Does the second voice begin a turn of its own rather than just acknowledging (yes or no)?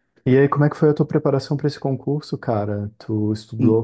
no